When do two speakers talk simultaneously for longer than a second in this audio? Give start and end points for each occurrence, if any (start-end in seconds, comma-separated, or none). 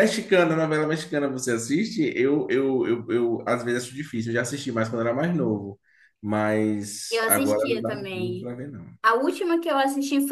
7.1-8.5